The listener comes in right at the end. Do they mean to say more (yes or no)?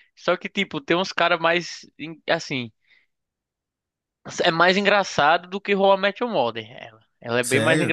no